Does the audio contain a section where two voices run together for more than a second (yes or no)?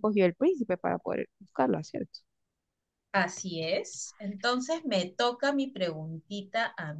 no